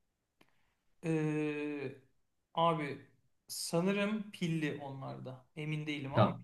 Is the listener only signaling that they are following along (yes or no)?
no